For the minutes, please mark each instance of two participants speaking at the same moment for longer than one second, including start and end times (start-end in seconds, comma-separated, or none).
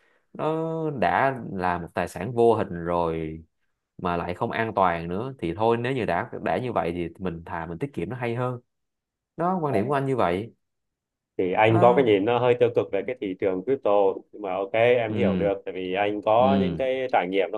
none